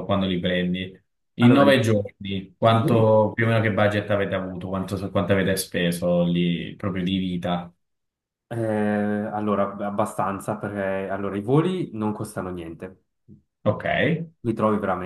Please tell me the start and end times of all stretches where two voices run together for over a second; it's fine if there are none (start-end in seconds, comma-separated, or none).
none